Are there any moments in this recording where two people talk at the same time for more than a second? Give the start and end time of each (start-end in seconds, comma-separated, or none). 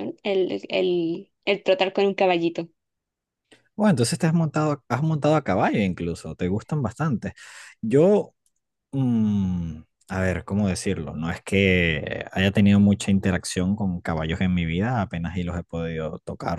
none